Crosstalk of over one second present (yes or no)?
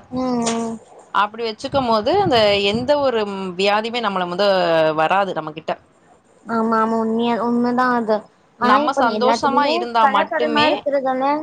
yes